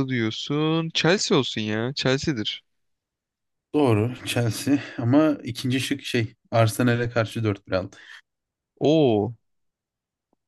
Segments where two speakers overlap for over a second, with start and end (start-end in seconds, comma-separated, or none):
none